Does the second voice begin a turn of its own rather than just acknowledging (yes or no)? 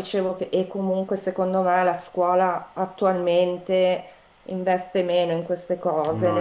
no